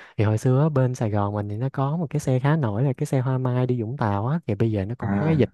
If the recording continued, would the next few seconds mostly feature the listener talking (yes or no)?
no